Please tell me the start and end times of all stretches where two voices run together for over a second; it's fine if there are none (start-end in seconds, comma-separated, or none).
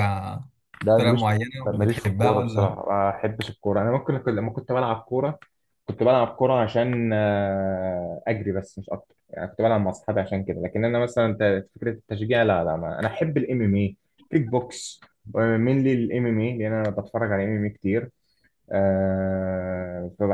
0.9-2.8